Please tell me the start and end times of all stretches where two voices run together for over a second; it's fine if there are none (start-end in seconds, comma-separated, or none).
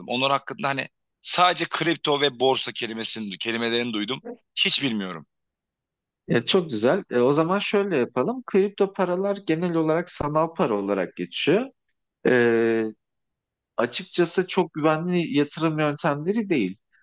none